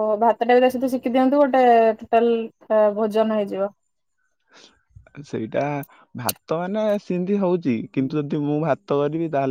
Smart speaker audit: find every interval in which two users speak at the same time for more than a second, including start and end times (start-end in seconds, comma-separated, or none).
none